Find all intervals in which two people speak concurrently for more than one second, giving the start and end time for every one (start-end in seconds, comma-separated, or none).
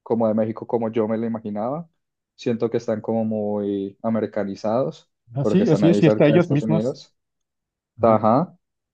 5.3-7.0